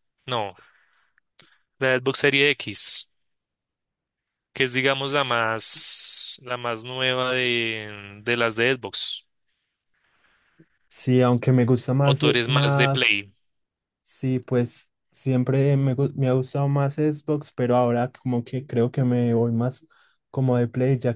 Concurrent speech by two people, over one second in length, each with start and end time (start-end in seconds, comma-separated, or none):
12.0-13.3